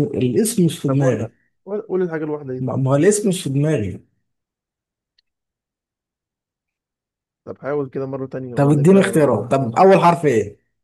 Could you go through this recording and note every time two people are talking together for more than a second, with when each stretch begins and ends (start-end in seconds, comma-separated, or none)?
8.5-9.8